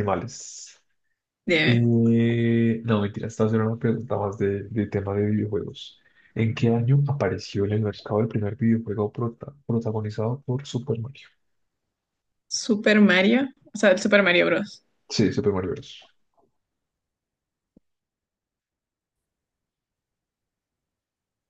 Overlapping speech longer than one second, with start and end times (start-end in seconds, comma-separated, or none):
none